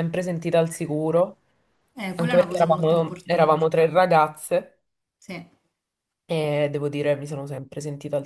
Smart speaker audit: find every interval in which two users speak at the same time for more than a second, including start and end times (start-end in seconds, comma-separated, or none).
2.1-3.6